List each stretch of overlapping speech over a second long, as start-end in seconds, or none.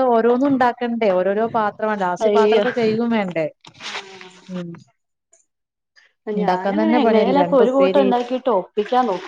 6.4-8.1